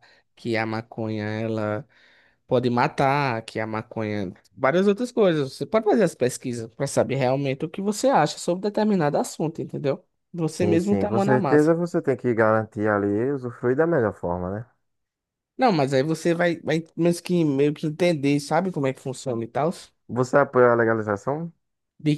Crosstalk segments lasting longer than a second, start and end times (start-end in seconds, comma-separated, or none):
10.5-11.8